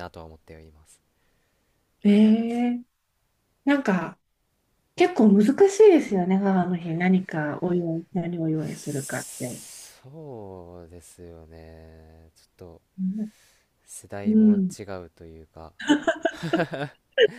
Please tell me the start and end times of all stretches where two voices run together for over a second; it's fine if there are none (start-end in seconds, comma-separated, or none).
none